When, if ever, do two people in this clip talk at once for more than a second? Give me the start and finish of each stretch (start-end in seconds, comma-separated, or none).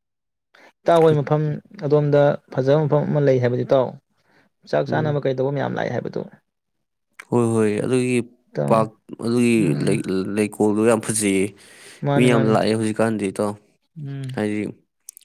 none